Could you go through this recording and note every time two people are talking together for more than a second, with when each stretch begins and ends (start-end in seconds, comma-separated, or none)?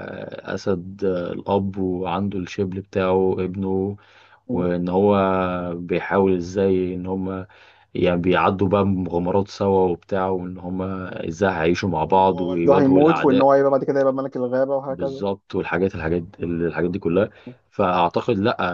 12.1-13.5